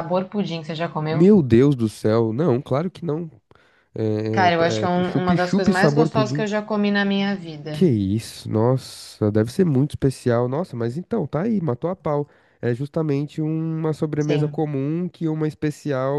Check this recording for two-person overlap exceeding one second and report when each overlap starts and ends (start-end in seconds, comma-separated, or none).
4.5-6.5